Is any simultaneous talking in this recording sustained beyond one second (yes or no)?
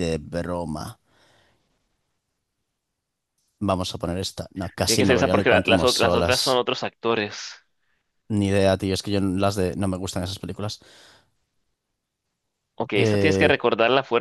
yes